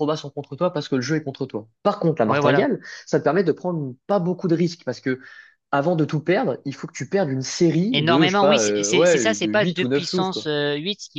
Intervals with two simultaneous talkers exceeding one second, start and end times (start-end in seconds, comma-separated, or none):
7.9-10.5